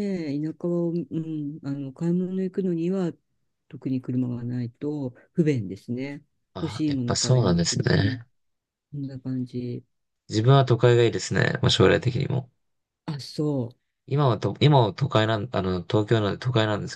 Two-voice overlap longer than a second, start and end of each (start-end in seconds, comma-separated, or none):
6.6-8.2